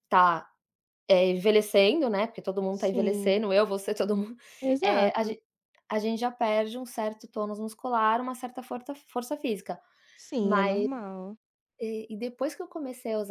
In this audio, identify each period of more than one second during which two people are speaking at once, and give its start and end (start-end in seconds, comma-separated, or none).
none